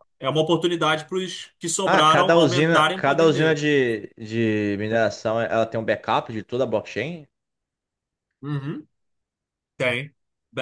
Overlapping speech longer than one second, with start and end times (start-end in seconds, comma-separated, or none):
1.9-3.6